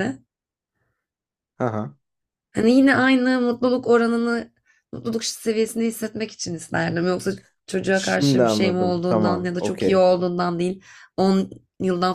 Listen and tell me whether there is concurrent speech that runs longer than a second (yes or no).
yes